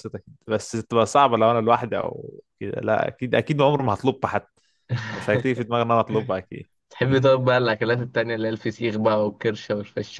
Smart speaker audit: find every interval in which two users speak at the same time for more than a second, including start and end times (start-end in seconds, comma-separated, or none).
none